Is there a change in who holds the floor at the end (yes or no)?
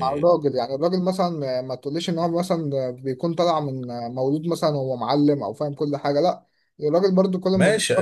yes